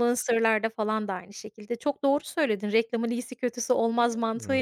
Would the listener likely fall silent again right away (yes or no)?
yes